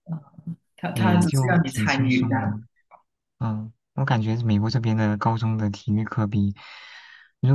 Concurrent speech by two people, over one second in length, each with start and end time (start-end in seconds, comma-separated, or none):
0.9-2.5